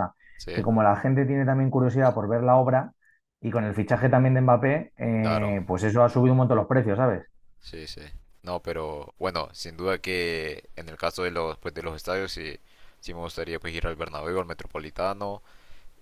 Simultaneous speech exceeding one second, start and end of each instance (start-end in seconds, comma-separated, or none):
none